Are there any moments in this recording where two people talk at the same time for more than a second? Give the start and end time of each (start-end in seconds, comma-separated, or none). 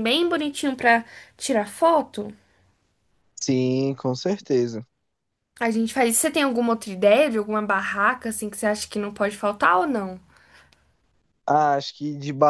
none